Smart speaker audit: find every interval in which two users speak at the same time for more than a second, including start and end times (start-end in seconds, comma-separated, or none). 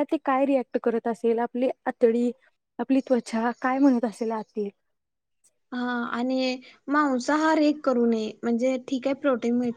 none